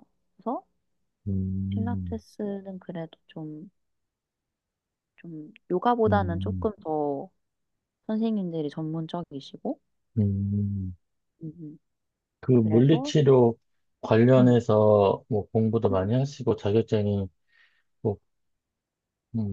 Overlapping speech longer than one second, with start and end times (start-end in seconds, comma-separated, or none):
none